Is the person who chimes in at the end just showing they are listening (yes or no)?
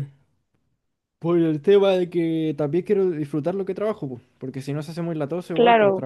yes